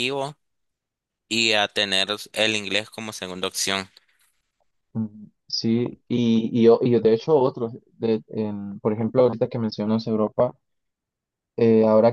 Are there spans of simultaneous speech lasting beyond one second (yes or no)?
no